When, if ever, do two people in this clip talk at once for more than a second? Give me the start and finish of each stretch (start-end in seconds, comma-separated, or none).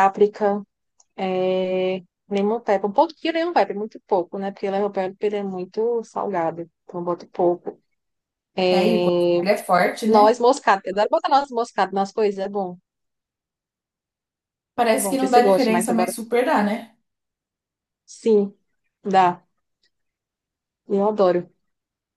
14.9-16.1